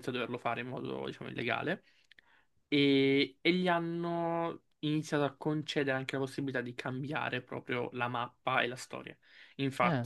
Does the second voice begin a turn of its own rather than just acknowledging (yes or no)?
no